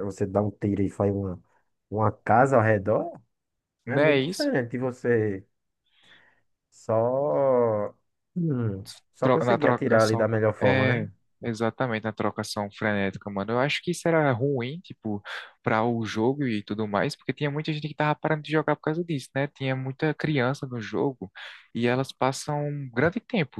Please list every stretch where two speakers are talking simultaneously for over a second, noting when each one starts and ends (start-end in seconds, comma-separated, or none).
9.2-11.1